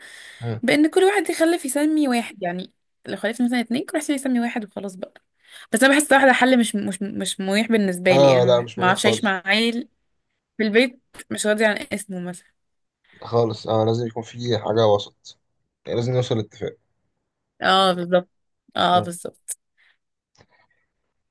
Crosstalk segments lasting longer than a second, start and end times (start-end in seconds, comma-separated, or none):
8.1-9.3